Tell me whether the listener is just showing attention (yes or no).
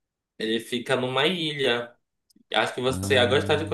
yes